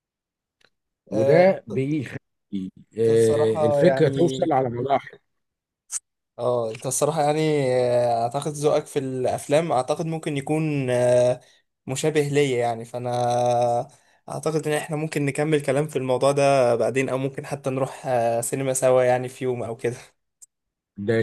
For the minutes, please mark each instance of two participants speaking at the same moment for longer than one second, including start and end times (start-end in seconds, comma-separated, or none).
3.1-4.5